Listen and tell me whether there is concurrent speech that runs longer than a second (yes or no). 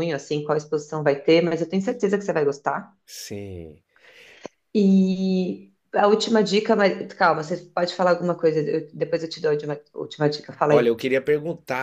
no